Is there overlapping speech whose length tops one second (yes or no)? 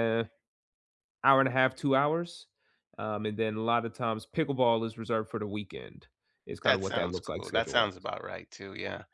yes